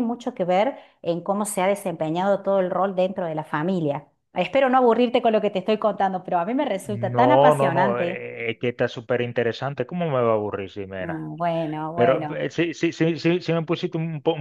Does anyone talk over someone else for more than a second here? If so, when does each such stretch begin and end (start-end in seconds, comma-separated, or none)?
6.8-8.2